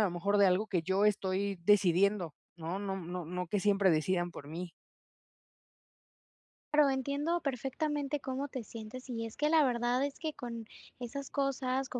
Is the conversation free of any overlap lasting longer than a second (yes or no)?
yes